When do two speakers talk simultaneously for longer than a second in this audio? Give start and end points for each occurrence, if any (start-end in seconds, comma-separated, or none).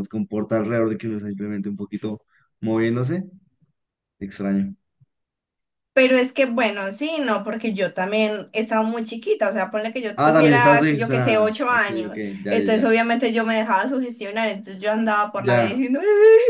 10.2-13.0